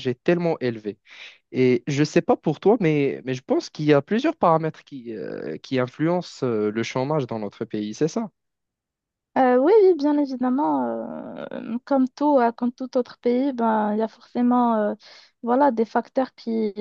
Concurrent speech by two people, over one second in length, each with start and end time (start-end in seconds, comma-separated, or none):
none